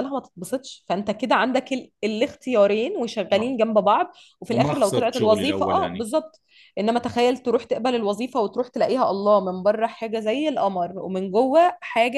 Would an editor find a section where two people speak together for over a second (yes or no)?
yes